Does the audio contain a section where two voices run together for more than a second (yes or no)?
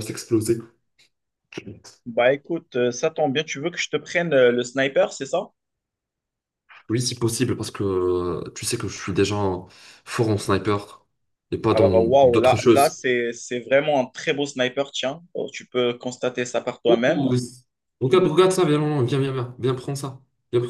yes